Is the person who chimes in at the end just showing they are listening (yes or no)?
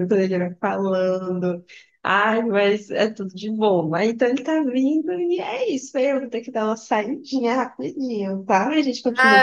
no